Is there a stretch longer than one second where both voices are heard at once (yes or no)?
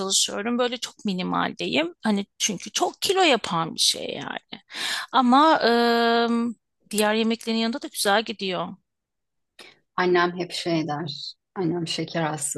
no